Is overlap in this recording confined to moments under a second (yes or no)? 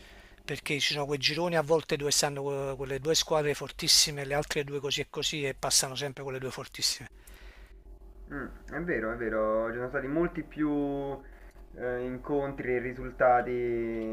yes